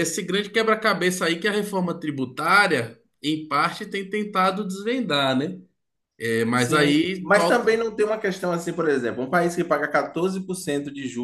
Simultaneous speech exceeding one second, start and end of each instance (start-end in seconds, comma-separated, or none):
6.5-7.8